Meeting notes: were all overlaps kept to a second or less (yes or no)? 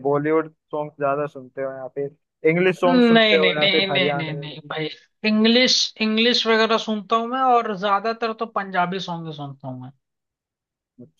no